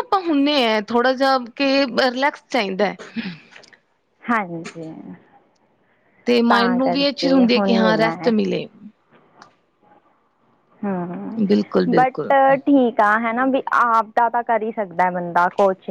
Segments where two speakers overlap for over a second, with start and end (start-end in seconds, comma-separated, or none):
6.5-8.3